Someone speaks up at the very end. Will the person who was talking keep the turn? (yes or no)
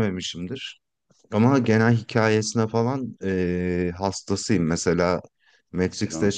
yes